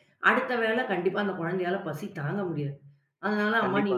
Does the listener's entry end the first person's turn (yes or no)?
no